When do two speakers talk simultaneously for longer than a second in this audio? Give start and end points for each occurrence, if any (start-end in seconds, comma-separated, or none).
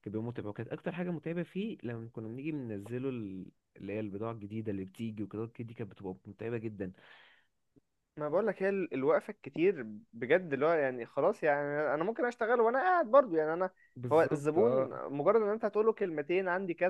none